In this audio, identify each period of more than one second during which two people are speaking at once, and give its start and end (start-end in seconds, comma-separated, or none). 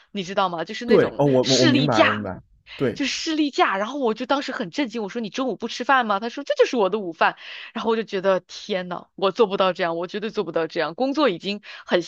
0.8-2.3